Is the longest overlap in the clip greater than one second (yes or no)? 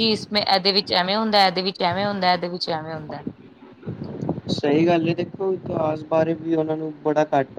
no